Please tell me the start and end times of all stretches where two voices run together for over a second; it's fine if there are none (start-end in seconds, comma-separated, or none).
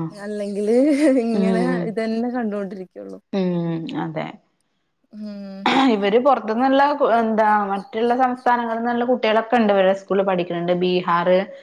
none